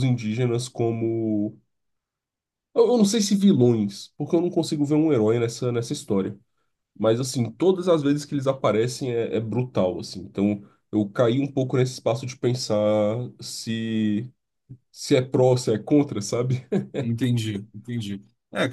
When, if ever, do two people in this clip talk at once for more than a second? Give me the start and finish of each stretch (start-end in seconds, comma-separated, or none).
none